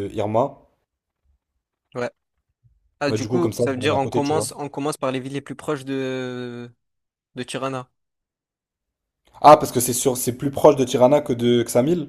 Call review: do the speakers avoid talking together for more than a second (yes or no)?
no